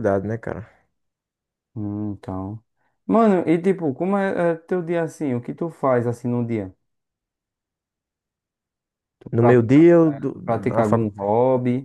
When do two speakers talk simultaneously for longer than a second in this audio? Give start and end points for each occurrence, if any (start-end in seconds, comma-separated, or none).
9.3-11.1